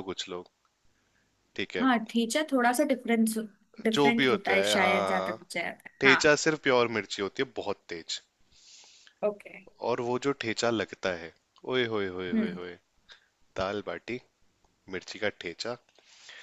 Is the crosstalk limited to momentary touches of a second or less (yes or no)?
no